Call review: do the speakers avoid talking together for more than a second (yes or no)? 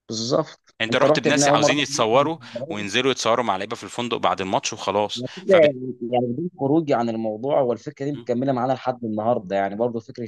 no